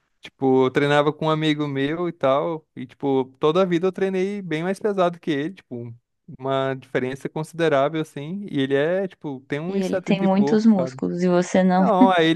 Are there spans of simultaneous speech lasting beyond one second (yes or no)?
yes